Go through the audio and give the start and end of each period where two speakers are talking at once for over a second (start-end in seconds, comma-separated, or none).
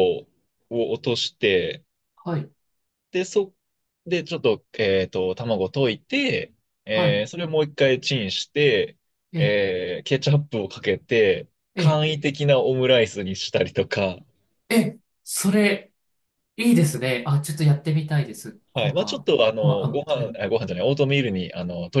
18.7-20.4